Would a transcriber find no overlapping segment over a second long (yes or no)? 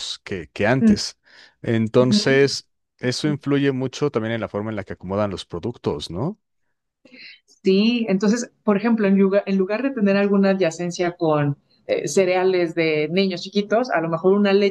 yes